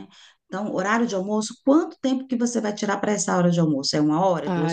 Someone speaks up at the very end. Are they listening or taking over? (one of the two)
taking over